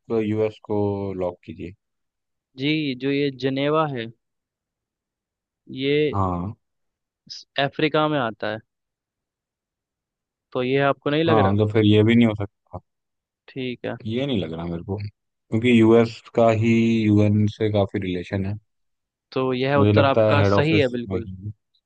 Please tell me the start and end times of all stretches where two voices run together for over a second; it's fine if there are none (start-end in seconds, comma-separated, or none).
19.8-21.3